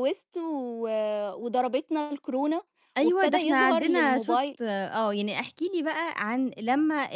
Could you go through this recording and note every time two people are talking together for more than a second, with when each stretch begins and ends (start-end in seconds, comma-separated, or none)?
3.0-4.6